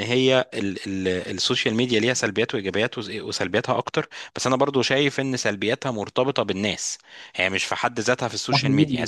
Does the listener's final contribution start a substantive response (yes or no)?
no